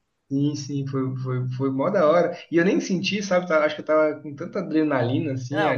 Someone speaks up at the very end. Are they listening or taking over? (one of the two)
taking over